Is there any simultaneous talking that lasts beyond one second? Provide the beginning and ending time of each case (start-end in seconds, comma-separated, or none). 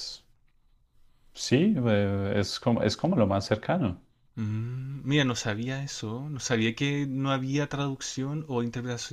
none